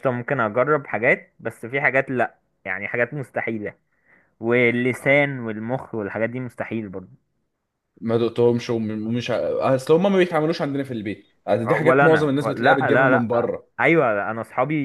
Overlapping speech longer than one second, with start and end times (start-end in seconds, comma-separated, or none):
11.8-13.7